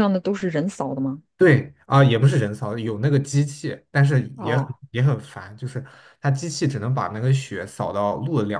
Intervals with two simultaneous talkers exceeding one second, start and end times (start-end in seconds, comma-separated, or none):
none